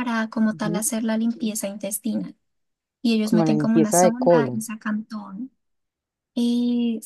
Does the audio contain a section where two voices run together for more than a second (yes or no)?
yes